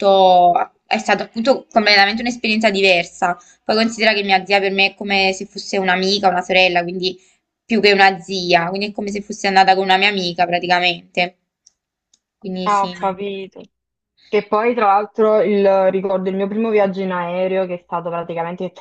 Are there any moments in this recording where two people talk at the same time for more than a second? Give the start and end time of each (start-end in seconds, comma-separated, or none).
none